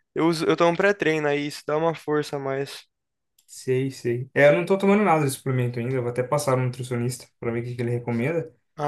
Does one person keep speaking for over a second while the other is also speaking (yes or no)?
no